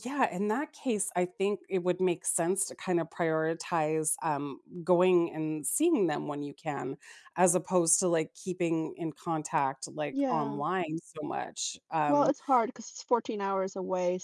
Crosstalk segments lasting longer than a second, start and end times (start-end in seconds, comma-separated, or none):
none